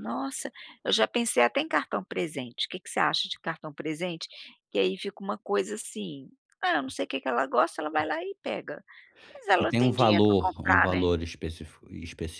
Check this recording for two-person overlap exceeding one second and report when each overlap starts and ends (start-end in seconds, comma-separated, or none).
9.6-11.1